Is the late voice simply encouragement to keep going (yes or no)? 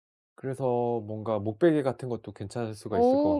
no